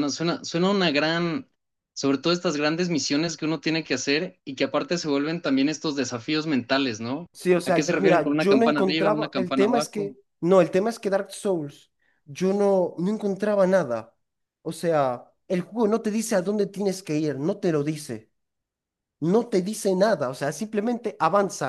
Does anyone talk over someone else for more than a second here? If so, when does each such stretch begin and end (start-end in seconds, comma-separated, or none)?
7.7-10.2